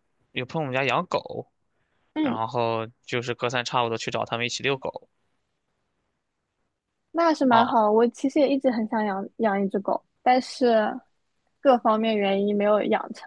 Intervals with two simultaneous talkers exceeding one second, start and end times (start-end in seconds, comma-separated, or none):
none